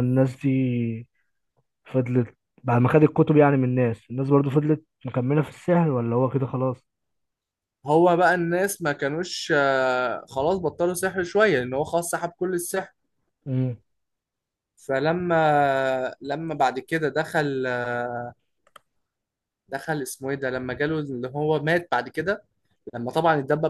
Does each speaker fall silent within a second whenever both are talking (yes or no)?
yes